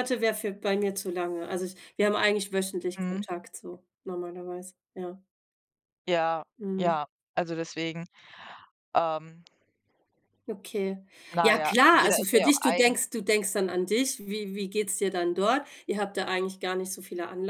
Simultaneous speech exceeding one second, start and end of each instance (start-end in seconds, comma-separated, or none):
11.4-12.9